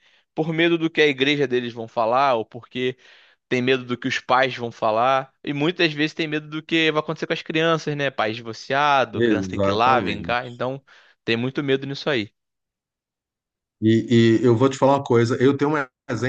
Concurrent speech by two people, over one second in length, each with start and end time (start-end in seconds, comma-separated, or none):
9.1-10.5